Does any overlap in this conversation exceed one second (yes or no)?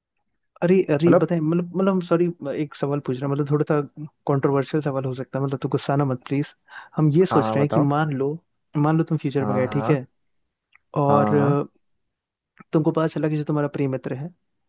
no